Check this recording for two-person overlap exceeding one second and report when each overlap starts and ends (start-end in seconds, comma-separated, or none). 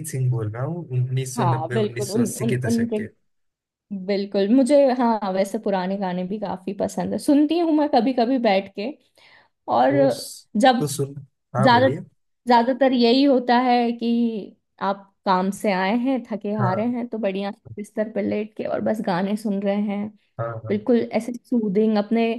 1.4-3.0